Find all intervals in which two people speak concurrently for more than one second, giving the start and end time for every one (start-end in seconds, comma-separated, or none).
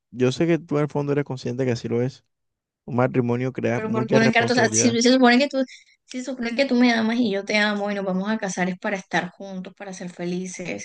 3.7-5.0